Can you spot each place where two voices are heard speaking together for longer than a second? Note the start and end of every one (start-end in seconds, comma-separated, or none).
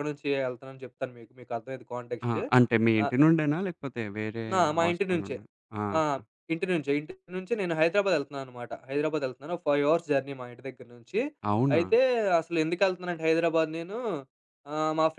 none